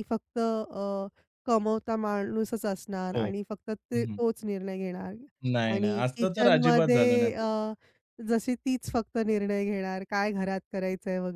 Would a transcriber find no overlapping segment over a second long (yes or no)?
no